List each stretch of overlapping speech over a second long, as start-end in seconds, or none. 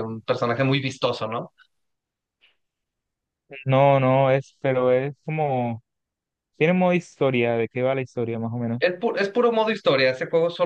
none